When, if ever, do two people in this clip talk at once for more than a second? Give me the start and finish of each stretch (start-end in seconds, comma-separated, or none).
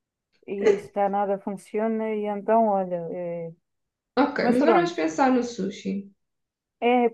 none